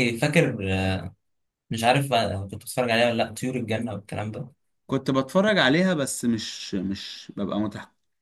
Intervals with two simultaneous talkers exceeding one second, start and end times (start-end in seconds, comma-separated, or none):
none